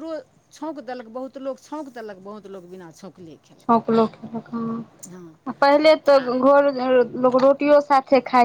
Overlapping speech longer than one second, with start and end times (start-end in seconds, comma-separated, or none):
none